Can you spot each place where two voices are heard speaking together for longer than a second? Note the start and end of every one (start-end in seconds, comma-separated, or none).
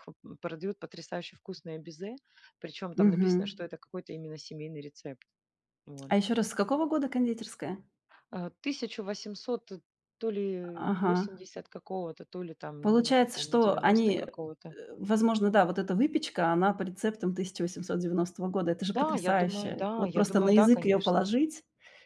12.8-14.3, 19.0-21.2